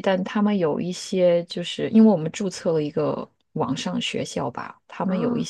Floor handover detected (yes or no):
no